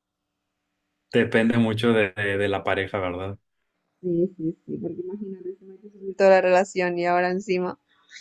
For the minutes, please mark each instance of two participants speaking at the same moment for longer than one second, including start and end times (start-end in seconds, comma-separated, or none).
none